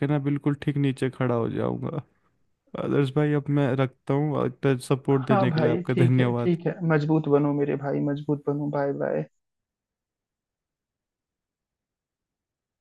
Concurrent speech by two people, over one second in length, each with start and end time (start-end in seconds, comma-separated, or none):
5.1-6.6